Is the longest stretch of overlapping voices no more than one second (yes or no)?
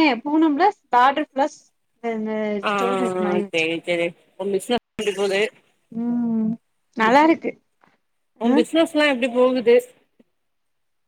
yes